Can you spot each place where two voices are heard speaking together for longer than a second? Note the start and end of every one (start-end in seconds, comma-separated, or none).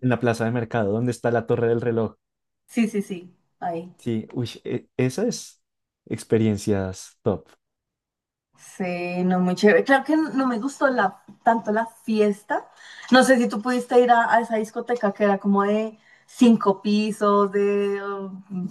none